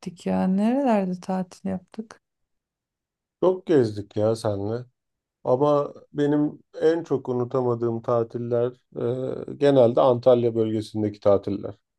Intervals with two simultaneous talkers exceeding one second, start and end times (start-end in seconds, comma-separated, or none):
none